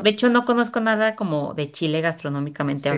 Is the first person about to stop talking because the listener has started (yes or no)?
yes